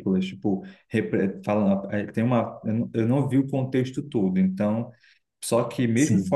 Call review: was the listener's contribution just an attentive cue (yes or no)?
yes